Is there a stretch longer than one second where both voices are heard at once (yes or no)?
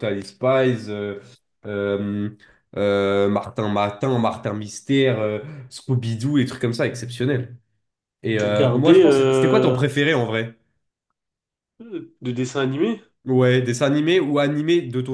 yes